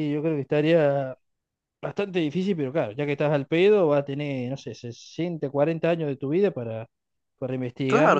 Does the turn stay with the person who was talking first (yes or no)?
no